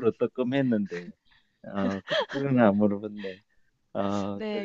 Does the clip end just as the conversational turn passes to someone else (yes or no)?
yes